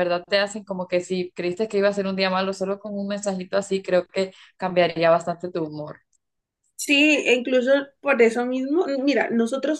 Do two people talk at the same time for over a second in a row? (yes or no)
no